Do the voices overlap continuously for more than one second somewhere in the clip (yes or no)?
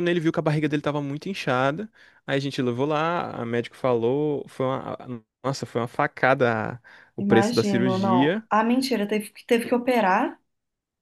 yes